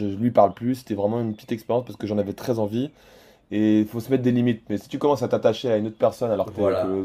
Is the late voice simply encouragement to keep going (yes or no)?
yes